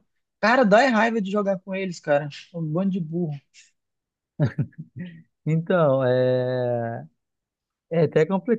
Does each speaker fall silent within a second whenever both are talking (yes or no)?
yes